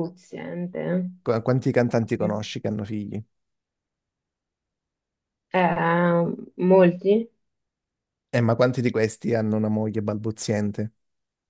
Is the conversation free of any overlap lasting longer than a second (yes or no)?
yes